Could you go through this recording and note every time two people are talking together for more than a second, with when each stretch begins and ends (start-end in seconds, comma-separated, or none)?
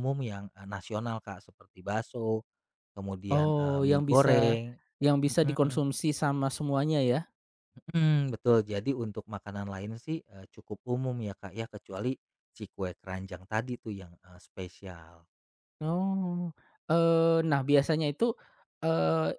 3.3-4.5